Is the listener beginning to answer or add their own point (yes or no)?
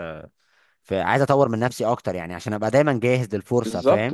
yes